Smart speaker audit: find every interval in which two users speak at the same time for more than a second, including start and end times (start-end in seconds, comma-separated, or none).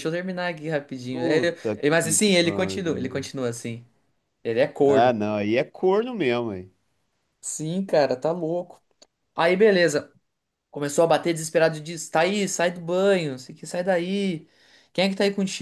1.1-3.3